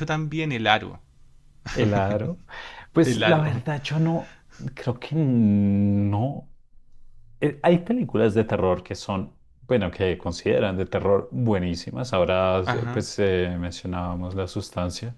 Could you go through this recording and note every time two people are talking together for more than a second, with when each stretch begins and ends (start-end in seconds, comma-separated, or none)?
none